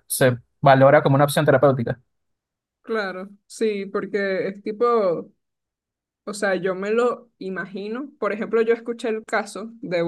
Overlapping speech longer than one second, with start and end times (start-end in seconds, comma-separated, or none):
none